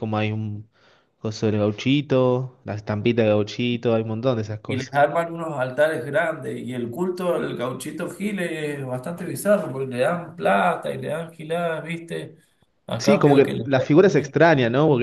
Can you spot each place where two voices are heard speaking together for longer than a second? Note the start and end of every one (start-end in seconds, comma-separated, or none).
13.0-14.3